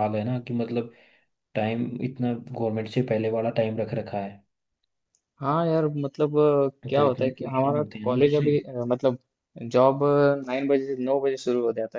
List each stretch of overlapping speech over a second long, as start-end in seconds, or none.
7.0-8.5